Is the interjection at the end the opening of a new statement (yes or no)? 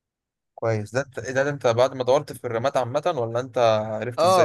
yes